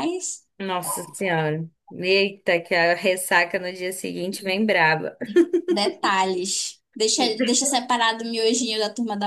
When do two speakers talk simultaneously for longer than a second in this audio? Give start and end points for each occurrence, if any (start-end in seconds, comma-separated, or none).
none